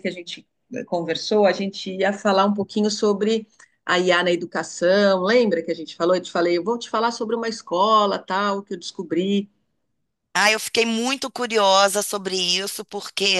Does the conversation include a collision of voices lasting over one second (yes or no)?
no